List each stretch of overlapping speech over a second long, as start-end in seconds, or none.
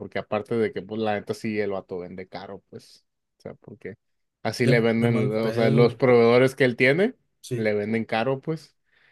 4.6-6.0